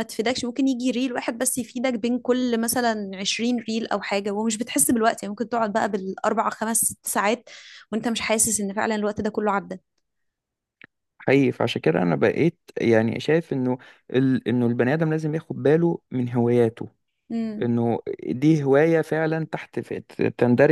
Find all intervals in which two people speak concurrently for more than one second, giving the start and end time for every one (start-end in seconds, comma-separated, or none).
none